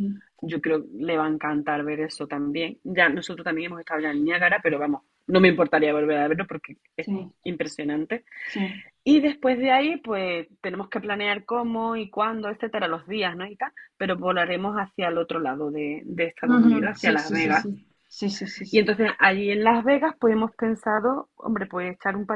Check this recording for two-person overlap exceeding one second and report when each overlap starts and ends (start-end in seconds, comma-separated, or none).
16.4-17.6